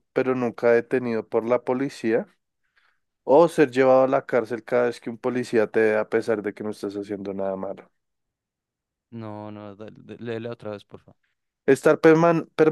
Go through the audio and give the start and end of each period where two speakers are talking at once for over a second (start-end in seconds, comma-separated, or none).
none